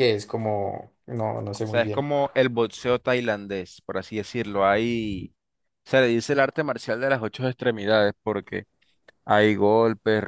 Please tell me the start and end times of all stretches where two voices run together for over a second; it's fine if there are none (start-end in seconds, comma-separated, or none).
none